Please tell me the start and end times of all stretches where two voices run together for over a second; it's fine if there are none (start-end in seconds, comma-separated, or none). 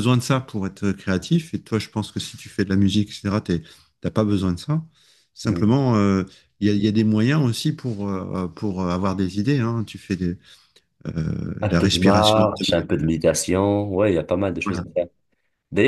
11.6-12.8